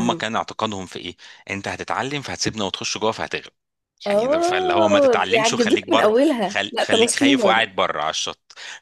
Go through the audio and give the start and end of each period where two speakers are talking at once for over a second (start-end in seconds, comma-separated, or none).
4.1-7.7